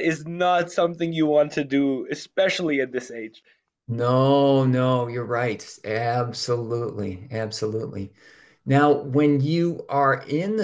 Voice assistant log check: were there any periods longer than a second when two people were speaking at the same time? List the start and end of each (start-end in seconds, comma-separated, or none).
none